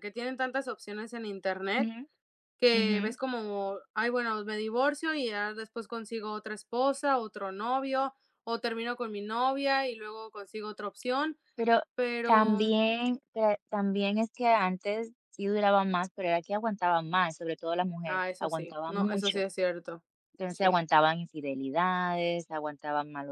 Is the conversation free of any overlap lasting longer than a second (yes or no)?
no